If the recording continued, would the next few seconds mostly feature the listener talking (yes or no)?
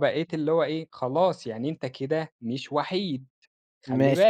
yes